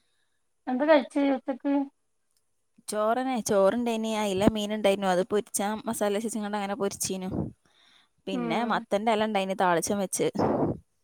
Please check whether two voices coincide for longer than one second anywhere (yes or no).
no